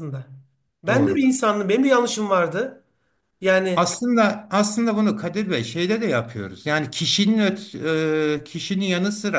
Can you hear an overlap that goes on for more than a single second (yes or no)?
no